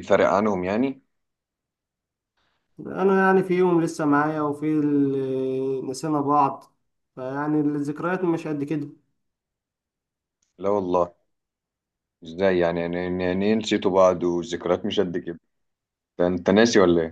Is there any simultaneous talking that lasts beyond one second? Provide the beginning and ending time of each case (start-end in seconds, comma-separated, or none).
none